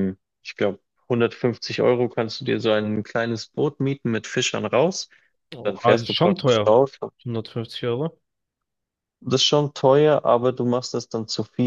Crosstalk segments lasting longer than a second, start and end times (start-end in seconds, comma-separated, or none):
5.5-6.8